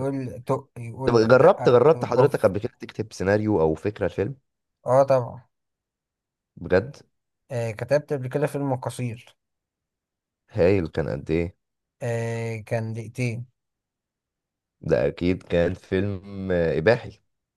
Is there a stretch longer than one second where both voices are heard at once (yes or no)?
yes